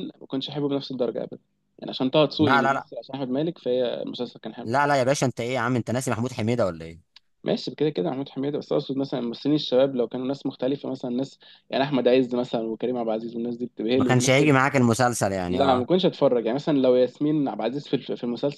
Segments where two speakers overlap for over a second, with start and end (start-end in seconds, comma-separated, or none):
none